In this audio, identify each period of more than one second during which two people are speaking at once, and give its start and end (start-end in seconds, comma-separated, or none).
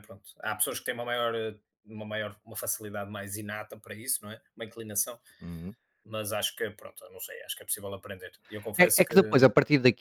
none